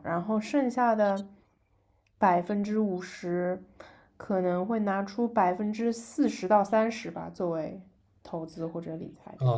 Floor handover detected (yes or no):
yes